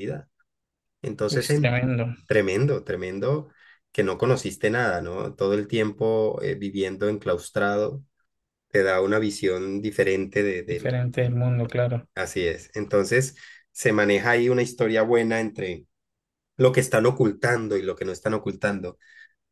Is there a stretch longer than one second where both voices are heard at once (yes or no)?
no